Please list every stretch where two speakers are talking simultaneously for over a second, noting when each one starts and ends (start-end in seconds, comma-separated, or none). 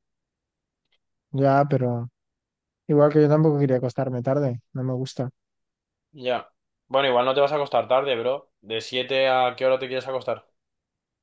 none